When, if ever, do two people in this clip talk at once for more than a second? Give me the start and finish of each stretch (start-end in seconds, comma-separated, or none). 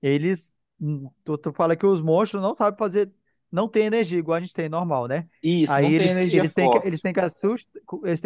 5.7-7.0